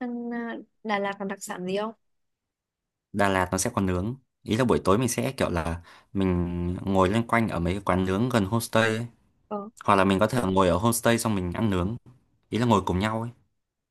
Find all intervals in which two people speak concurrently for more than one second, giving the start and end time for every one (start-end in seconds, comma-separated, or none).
none